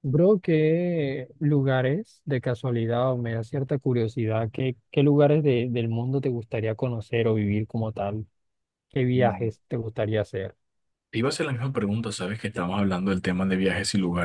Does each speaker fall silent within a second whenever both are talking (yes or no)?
yes